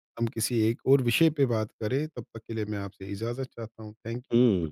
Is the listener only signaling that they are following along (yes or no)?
no